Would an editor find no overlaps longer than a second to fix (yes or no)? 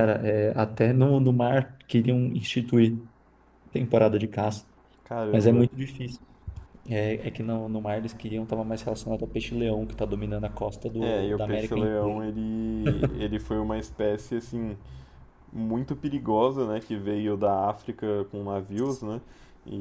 no